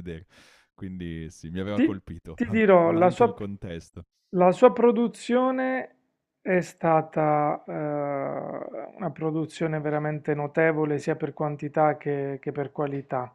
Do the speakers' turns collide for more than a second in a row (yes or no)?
yes